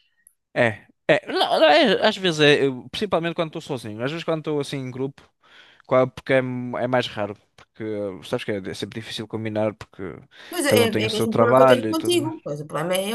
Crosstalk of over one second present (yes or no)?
yes